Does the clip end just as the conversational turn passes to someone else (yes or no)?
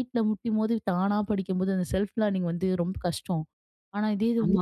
no